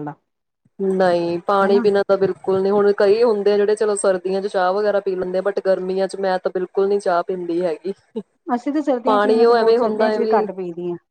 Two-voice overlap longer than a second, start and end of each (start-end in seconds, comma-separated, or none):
9.0-10.4